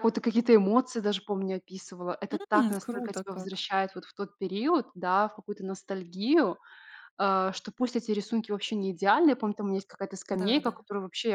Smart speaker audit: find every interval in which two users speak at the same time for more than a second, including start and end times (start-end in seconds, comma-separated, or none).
2.3-3.6